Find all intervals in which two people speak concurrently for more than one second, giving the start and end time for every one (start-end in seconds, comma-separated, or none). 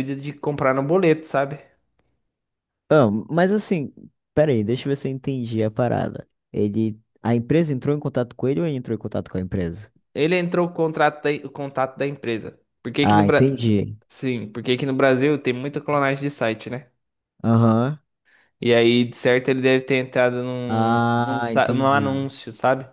20.7-22.2